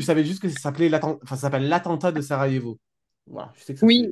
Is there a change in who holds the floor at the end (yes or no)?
yes